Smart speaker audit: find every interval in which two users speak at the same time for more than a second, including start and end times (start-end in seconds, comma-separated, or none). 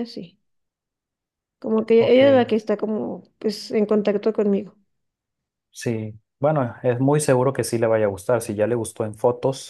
none